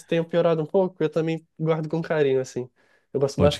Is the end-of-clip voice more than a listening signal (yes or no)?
yes